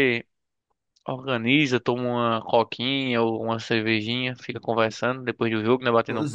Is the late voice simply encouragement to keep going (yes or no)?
no